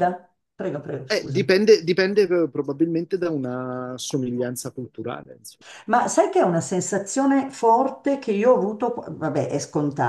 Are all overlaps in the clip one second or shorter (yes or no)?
yes